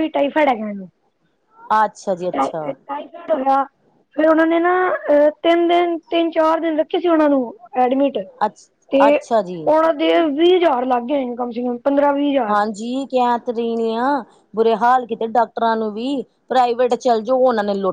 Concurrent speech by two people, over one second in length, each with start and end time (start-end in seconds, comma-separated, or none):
none